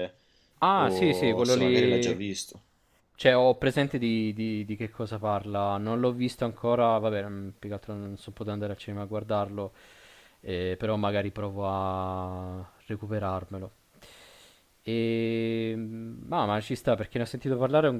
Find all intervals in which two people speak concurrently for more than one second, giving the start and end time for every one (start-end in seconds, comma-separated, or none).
0.7-2.2